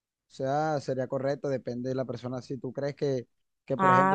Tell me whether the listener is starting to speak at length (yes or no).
no